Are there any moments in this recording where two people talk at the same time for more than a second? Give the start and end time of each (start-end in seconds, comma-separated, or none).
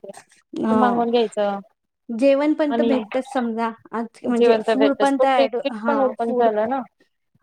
4.4-6.5